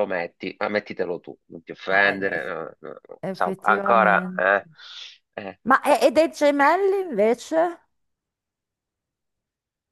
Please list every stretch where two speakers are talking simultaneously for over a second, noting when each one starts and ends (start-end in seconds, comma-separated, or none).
3.2-4.4